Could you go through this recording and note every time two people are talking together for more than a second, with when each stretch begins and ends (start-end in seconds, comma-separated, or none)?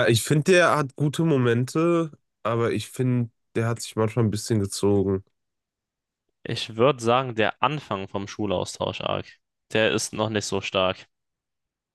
none